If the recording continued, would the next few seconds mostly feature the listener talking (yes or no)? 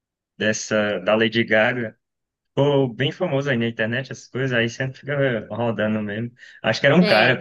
no